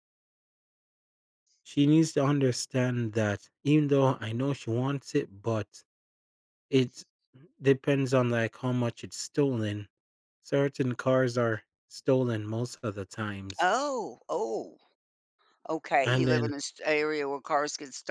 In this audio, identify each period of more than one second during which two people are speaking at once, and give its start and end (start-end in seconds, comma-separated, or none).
none